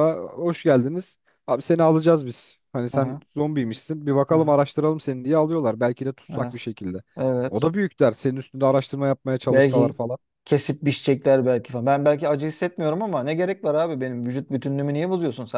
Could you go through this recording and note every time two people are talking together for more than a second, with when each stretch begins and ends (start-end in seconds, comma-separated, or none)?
none